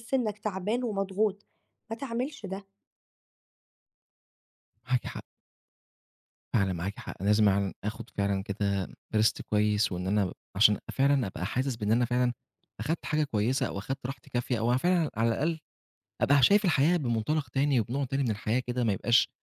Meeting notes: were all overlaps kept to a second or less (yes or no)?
yes